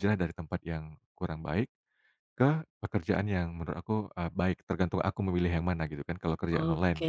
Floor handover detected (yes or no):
yes